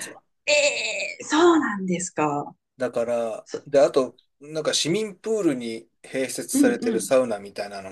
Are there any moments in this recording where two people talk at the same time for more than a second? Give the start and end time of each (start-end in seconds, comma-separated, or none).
none